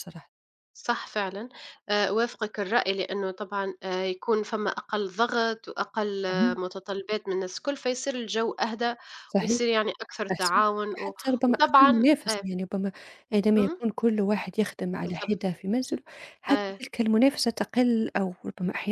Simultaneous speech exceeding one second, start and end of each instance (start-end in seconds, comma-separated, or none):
10.3-12.4